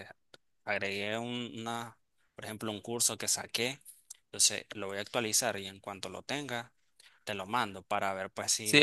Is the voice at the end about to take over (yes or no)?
yes